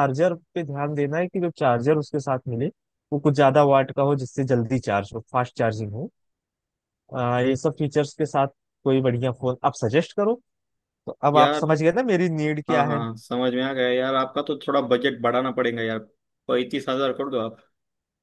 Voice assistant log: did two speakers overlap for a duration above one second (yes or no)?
no